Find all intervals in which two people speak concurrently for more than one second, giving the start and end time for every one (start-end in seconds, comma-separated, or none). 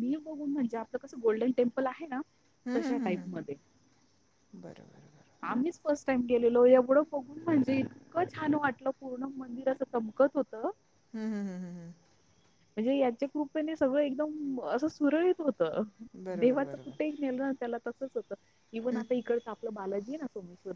none